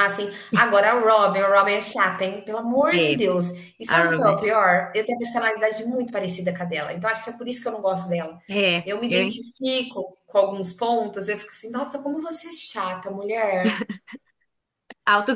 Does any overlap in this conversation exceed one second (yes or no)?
no